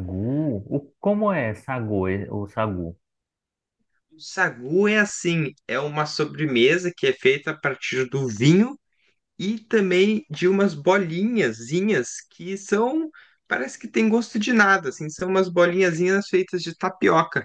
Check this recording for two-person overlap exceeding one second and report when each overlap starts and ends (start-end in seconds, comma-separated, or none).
none